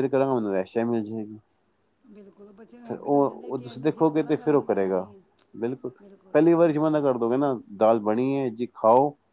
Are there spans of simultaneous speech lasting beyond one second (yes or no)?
yes